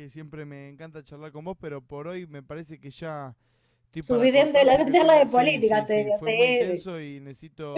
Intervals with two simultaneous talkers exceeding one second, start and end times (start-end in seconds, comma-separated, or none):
4.0-6.9